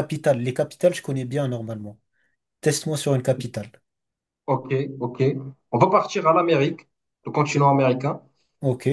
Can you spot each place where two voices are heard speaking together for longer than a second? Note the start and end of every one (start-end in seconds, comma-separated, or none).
none